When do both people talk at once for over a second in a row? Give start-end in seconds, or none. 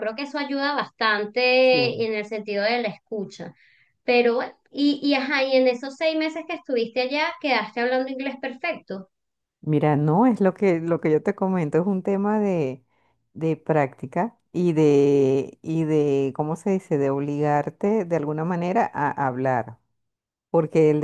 none